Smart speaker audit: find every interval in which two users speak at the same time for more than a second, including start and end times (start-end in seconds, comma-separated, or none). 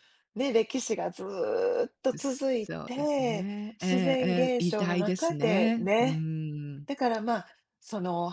2.1-6.2